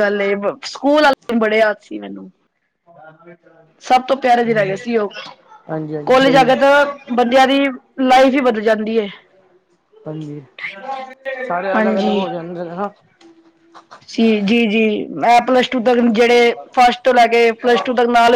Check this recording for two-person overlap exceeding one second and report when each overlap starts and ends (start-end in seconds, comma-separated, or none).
none